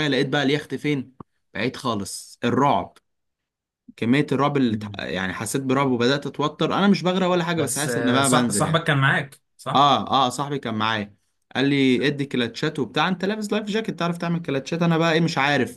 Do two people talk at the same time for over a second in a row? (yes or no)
yes